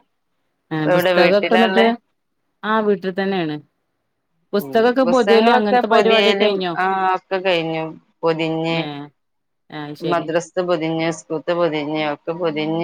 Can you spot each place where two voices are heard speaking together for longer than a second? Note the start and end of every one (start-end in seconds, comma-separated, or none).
4.6-6.7